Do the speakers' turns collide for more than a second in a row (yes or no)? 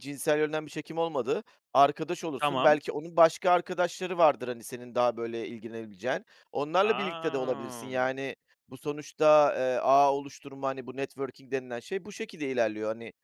yes